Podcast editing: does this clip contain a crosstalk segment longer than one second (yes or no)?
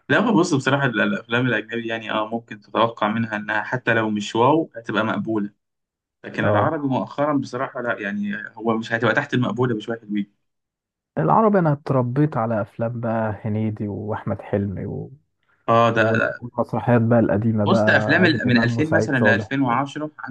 yes